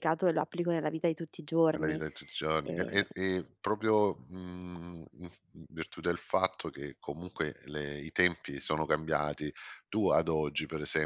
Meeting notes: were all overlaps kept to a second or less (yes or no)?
yes